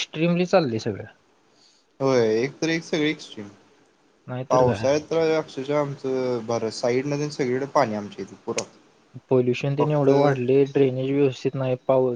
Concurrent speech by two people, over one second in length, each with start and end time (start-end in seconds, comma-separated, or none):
none